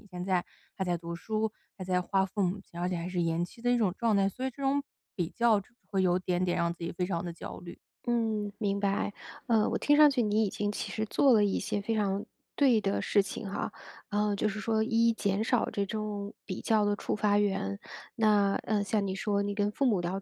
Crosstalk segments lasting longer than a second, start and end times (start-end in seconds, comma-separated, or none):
none